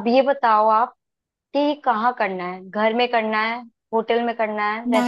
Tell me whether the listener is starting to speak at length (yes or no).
yes